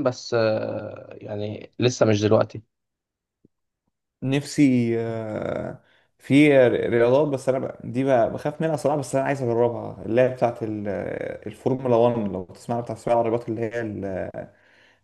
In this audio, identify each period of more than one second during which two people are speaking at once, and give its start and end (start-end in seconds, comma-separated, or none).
none